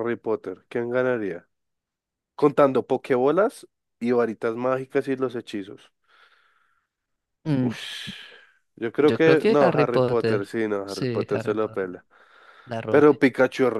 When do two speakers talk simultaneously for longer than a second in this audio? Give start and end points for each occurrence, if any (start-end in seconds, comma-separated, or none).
9.0-12.0